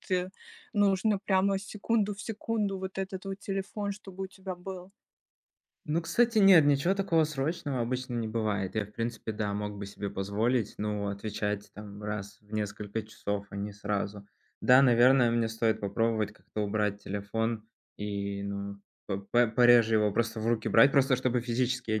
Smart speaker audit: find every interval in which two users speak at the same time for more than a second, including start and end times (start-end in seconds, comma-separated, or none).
none